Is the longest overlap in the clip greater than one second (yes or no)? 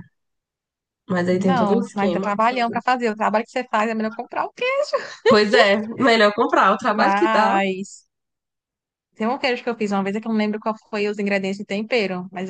yes